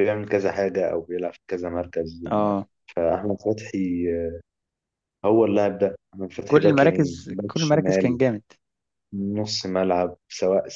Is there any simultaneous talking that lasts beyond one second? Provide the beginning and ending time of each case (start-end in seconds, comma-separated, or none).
6.5-8.2